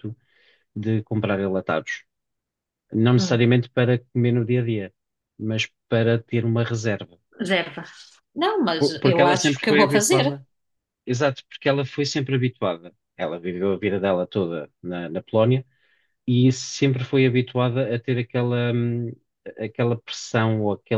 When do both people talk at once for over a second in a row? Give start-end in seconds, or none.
8.8-10.4